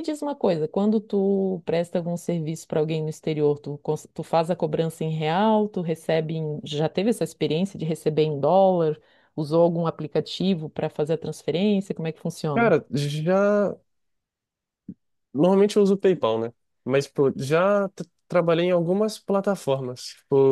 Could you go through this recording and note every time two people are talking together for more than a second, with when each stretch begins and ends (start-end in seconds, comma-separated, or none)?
none